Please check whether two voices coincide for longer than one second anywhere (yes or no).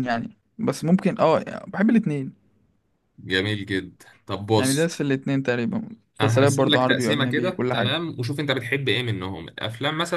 yes